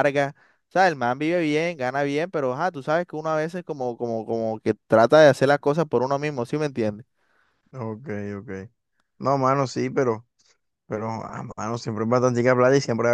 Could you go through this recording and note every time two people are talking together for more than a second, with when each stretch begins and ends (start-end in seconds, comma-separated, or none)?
none